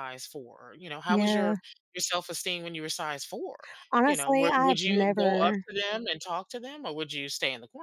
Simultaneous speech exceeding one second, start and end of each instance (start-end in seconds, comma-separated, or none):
4.0-5.7